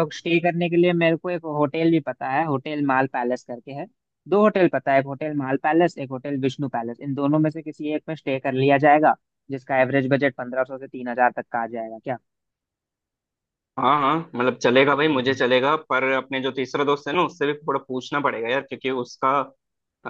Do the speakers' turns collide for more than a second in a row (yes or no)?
no